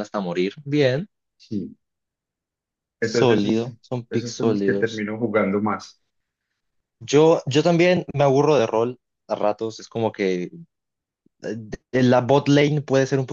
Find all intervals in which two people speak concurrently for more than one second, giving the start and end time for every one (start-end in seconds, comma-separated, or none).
3.0-5.1